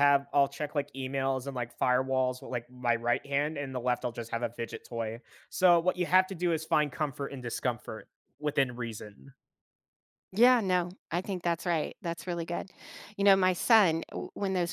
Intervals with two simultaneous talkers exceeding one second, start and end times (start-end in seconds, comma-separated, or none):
none